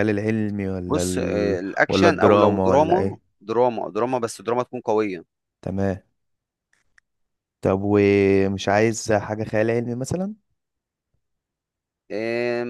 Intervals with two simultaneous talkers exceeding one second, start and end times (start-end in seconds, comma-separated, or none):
0.9-3.2